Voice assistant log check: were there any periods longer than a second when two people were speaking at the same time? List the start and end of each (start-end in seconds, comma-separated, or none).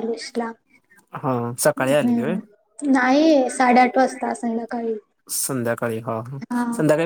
none